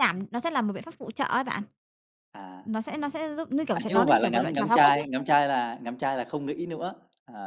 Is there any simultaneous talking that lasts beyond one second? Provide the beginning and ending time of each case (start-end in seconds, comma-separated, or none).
3.7-5.1